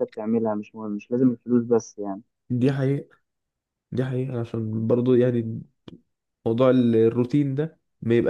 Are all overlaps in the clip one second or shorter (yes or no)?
yes